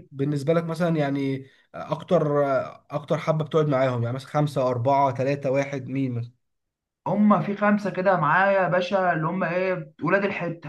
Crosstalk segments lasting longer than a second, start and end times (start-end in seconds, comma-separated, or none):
none